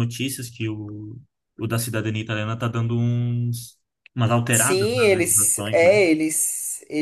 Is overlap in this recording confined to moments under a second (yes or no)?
no